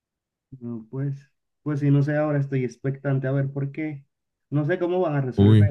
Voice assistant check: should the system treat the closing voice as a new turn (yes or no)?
no